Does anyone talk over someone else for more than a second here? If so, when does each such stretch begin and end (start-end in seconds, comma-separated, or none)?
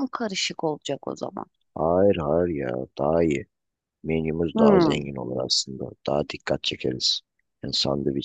none